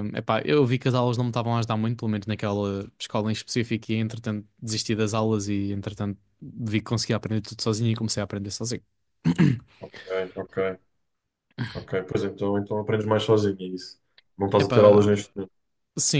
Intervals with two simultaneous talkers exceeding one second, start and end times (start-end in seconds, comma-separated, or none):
none